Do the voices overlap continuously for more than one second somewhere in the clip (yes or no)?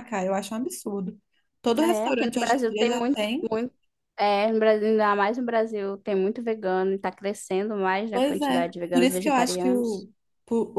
yes